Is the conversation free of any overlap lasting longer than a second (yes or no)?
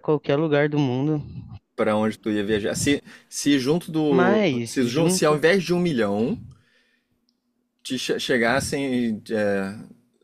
no